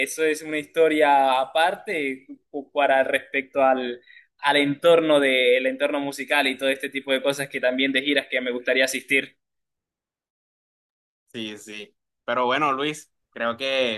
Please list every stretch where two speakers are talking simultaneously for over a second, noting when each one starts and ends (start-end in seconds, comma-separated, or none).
none